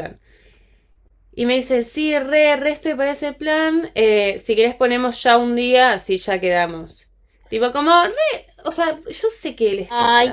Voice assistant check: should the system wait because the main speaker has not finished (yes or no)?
no